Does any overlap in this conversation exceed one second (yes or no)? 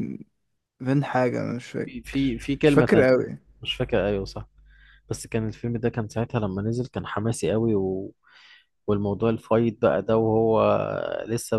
yes